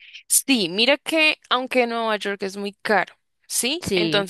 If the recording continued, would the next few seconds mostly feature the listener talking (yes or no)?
no